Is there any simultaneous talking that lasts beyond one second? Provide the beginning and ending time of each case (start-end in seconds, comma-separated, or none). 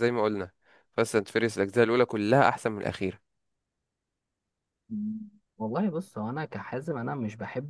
none